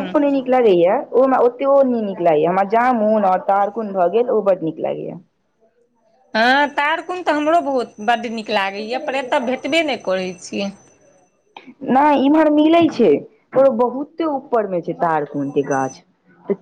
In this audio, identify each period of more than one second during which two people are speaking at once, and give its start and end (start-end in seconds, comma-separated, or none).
none